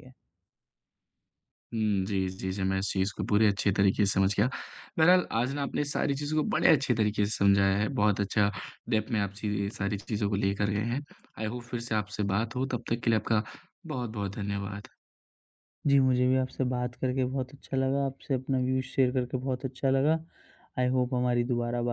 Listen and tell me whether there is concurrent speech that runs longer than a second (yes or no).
no